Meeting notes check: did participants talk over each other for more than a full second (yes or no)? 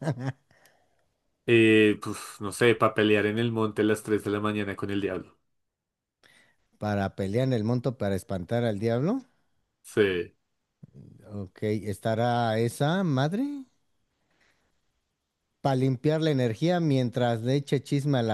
no